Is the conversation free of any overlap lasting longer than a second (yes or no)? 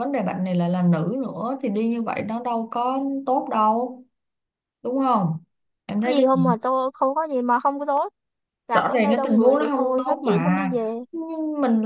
no